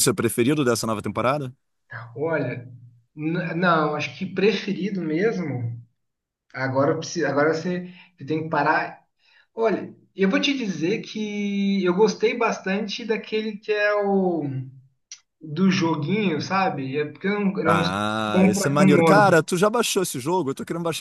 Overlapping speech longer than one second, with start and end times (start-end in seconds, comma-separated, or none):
17.7-19.3